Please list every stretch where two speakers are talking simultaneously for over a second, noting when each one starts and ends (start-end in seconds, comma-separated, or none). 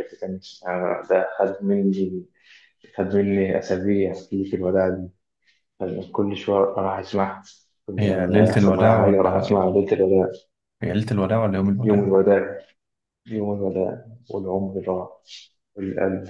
8.0-9.6